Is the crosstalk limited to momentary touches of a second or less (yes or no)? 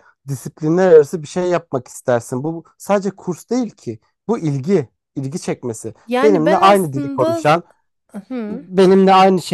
no